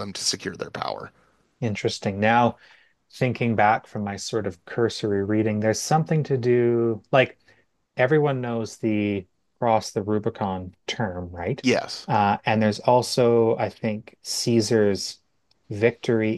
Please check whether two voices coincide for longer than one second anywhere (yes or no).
no